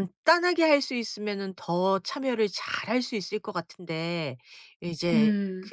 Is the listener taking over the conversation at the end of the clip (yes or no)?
no